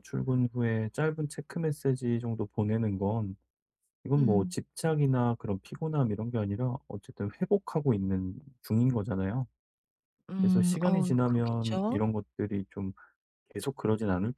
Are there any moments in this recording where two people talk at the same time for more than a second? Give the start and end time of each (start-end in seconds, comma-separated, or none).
10.4-12.0